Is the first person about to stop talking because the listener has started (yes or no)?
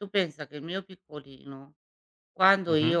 no